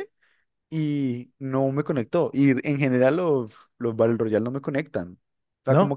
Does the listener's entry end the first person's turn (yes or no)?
no